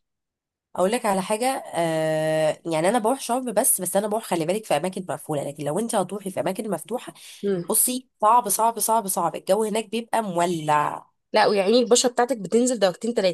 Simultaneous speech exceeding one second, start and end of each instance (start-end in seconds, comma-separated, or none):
none